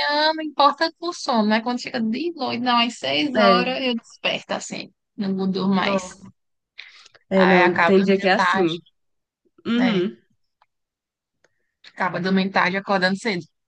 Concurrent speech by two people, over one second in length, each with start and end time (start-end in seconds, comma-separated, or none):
7.3-8.8